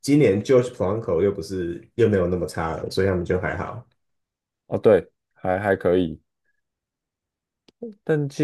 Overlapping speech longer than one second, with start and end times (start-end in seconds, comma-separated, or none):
none